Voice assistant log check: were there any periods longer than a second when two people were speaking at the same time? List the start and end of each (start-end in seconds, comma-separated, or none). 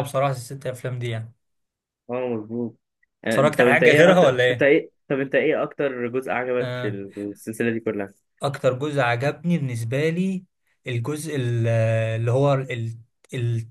3.3-4.7